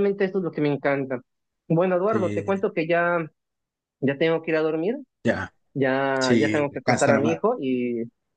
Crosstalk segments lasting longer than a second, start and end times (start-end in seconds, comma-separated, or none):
6.2-7.4